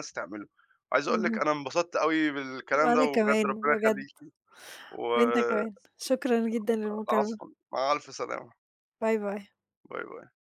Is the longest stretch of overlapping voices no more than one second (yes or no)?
no